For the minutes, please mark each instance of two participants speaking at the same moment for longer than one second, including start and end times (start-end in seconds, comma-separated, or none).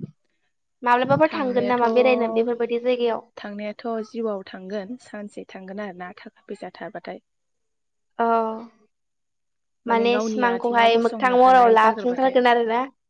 10.1-12.3